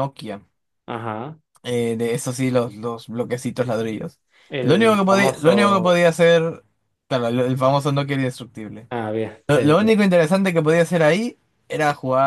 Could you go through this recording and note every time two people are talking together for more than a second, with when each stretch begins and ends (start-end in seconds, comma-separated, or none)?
4.6-6.0